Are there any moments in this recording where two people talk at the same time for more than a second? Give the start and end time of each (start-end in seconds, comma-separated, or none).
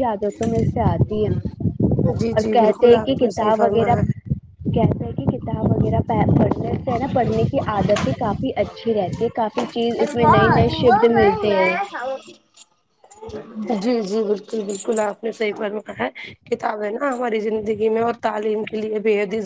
2.2-4.0